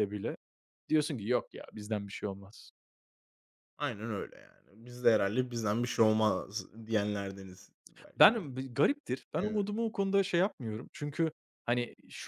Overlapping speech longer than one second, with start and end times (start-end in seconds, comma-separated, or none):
none